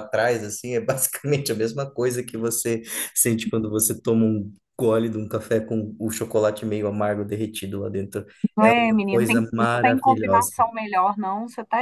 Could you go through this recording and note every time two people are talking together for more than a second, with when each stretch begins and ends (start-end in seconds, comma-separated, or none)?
9.1-10.5